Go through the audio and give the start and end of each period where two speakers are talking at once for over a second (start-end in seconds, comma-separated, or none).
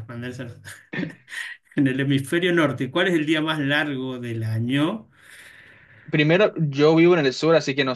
none